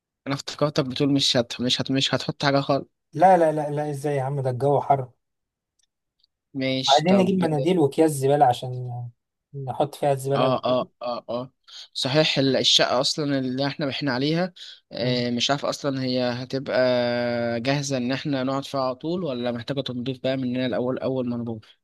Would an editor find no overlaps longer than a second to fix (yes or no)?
yes